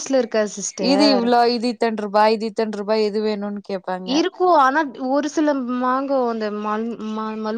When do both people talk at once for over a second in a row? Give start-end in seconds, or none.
none